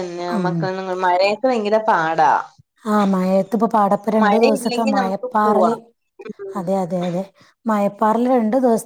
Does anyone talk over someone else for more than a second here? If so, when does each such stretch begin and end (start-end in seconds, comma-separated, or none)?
4.2-5.7